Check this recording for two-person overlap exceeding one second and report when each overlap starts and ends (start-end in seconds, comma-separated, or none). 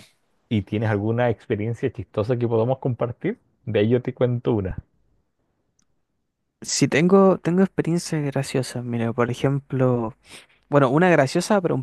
none